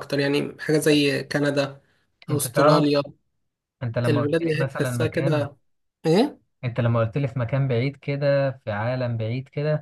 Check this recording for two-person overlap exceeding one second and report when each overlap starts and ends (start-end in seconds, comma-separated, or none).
4.1-5.5